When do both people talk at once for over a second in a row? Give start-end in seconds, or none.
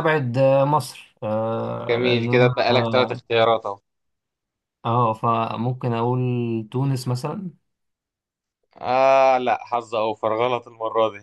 1.9-3.2